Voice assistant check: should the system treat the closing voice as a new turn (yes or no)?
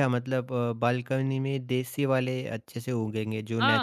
yes